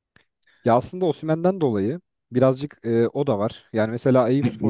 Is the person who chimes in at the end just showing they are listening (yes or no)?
no